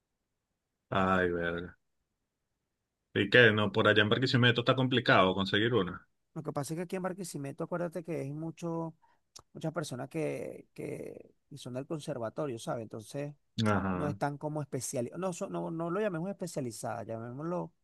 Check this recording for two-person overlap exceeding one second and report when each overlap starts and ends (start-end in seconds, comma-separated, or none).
none